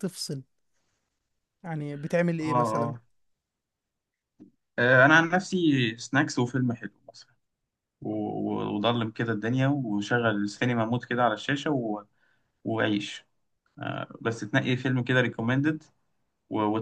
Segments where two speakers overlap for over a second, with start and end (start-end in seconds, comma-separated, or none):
none